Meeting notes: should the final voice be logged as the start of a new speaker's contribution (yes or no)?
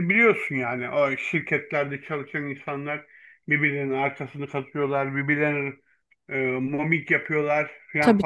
no